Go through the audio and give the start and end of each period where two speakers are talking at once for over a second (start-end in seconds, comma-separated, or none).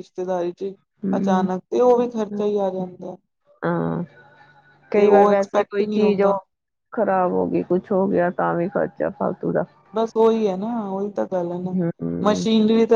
5.0-6.3